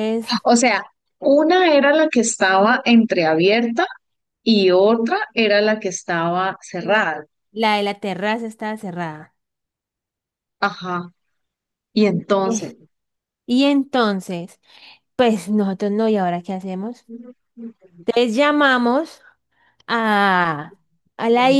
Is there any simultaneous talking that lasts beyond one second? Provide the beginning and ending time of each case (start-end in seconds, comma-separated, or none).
none